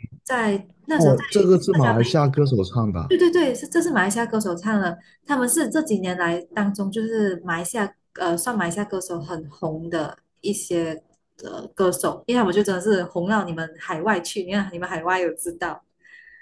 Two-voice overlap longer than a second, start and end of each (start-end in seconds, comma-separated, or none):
0.9-2.4